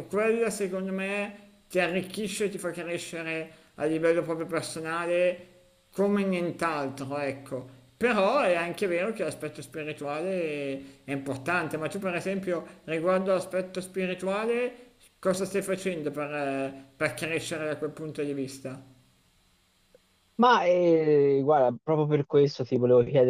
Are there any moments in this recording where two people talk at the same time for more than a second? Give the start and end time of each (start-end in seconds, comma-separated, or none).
none